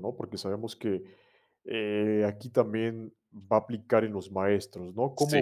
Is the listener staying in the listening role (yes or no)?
yes